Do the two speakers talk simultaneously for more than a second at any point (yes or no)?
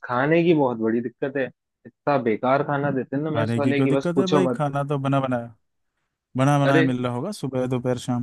yes